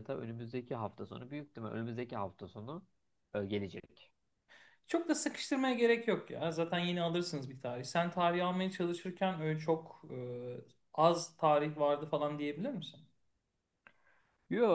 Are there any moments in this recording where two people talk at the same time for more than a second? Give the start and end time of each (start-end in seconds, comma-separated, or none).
none